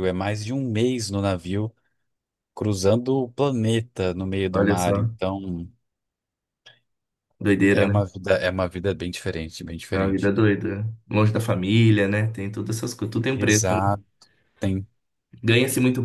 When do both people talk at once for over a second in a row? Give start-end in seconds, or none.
none